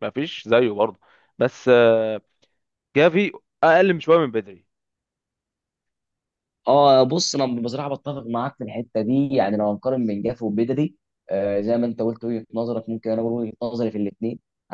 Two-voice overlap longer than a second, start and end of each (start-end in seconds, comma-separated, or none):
none